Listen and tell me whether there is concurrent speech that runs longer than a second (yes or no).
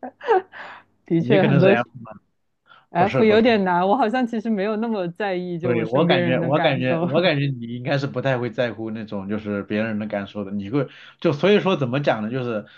yes